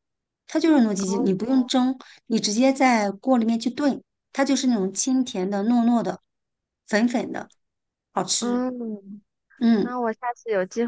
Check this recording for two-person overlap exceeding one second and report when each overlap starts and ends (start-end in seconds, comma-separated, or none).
none